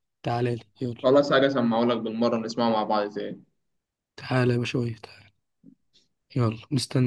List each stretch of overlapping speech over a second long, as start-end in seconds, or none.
none